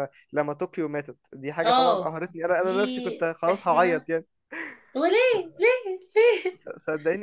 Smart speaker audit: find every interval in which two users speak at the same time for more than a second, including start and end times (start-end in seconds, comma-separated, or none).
1.6-4.1